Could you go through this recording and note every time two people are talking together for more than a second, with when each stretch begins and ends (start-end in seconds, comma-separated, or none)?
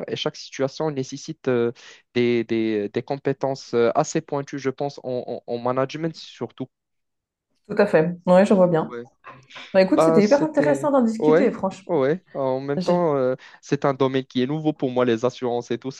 9.9-11.9